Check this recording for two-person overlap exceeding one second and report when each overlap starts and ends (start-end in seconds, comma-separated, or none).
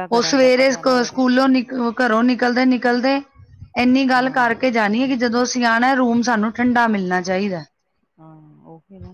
none